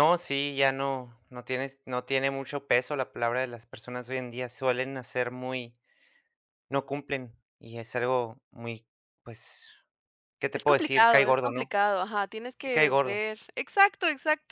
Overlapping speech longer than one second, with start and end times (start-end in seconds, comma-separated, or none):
10.5-11.8